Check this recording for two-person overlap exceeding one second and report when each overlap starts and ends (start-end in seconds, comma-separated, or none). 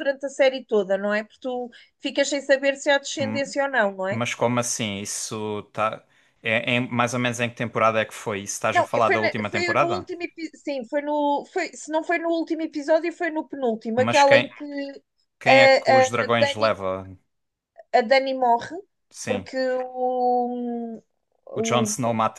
8.7-10.1, 15.5-16.7